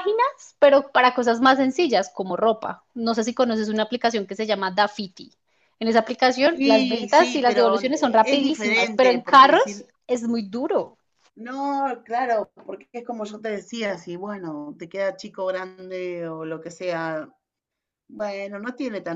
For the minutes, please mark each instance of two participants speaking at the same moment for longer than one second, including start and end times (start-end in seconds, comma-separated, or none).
6.5-9.9